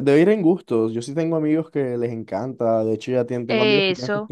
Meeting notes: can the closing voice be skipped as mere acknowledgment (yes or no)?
yes